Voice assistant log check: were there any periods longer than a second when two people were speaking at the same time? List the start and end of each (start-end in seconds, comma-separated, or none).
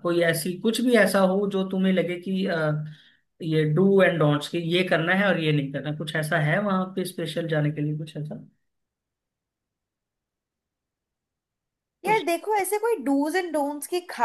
none